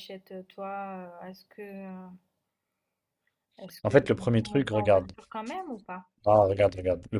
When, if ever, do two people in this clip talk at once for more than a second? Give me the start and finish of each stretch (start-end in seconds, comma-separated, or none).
3.8-5.1